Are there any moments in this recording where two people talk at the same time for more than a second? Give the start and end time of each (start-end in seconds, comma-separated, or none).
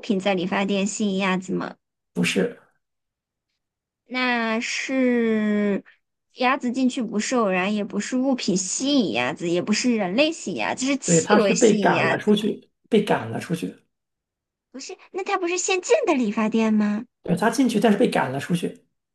11.1-12.3